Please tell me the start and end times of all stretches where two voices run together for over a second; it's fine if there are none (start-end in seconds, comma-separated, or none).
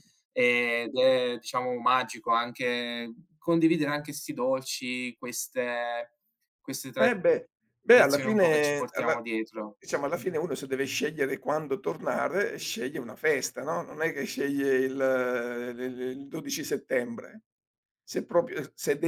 7.0-9.2